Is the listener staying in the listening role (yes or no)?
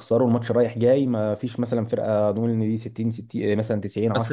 no